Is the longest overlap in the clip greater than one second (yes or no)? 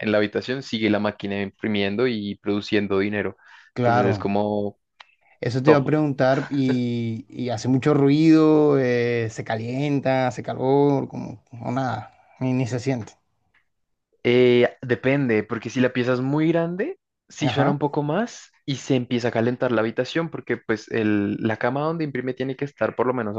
no